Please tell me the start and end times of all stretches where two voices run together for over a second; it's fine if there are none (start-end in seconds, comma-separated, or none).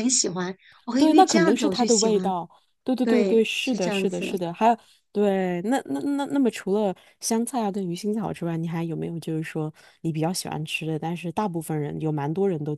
1.0-2.3, 3.0-4.4